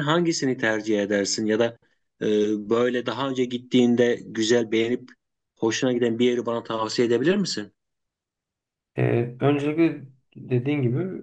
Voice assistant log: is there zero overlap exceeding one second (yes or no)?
yes